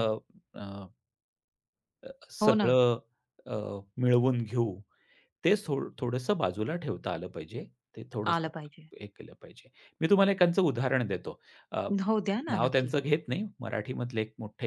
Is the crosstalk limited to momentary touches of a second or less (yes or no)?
yes